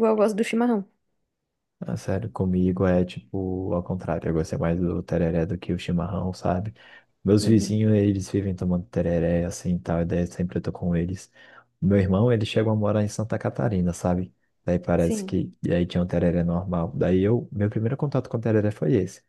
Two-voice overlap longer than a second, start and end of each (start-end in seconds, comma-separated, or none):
none